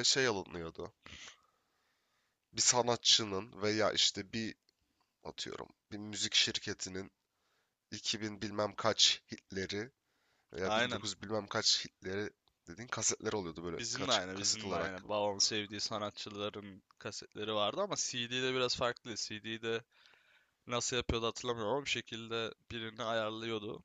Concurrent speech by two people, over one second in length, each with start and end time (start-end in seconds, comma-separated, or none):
13.8-15.1